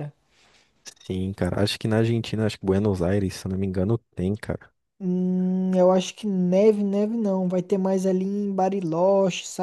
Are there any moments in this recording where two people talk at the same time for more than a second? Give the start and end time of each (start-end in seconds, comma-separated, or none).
none